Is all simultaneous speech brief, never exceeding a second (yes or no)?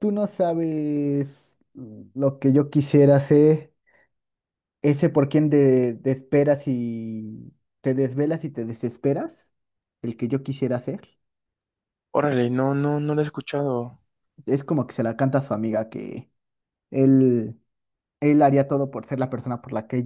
yes